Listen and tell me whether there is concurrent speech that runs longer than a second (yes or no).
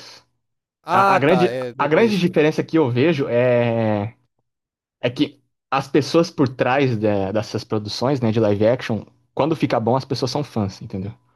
yes